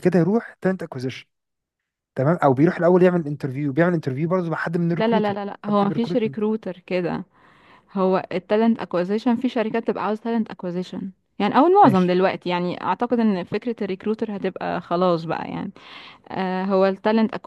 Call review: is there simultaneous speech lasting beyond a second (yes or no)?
yes